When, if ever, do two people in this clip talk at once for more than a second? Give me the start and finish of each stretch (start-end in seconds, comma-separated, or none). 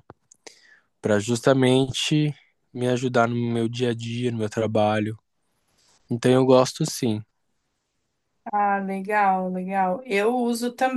none